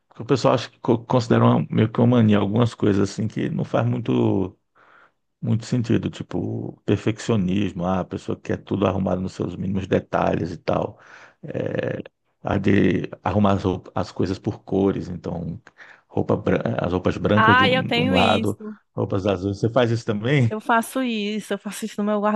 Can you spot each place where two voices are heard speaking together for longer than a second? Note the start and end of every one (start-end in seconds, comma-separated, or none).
17.4-18.6